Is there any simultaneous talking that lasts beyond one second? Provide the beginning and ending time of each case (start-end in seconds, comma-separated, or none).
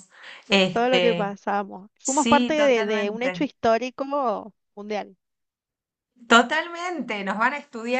2.0-3.4